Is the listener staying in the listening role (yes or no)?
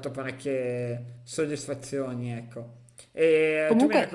yes